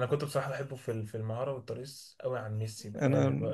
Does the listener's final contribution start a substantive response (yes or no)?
no